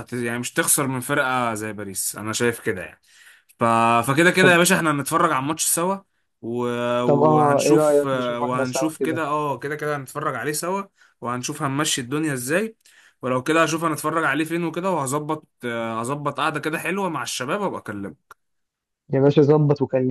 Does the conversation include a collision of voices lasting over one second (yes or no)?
yes